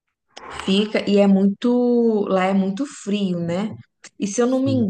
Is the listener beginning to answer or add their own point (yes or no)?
no